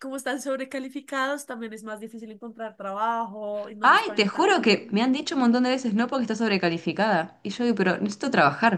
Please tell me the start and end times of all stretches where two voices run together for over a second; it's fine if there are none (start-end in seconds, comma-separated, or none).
3.8-5.1